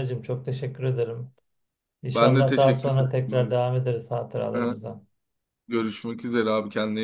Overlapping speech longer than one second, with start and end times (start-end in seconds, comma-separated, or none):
2.1-3.5